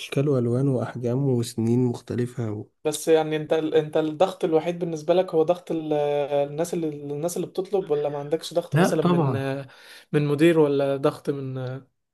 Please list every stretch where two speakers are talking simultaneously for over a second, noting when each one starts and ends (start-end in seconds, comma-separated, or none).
none